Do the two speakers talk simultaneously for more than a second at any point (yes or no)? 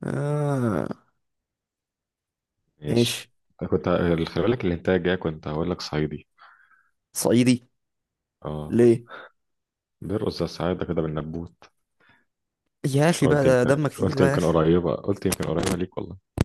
yes